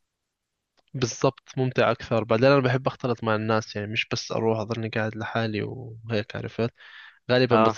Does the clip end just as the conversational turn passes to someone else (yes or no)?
no